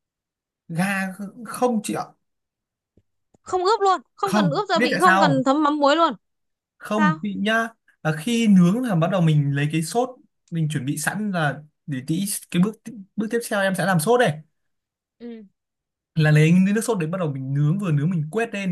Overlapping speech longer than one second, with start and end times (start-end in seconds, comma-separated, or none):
4.2-5.4